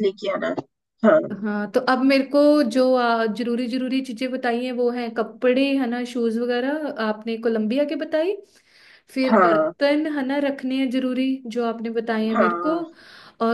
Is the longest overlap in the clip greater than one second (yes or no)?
no